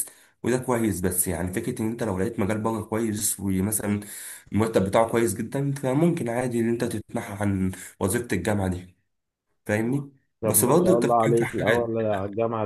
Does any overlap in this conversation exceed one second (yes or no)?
yes